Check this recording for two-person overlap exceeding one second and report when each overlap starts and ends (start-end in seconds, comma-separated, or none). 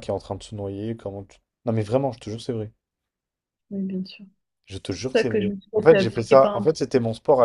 4.9-6.7